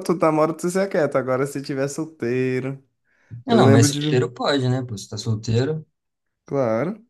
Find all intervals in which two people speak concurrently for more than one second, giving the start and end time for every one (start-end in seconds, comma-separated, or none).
none